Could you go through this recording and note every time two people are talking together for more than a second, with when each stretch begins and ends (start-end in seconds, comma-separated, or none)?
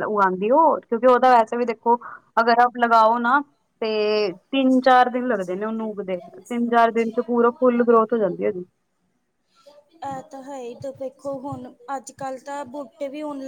none